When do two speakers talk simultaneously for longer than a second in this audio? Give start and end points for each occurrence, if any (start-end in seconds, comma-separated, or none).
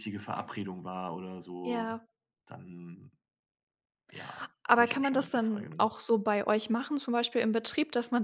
4.7-5.9